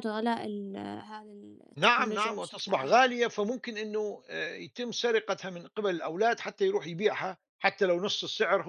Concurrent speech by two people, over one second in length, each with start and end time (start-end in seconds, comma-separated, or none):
1.8-3.0